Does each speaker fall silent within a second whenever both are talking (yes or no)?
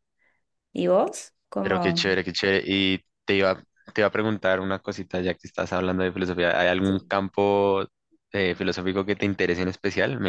yes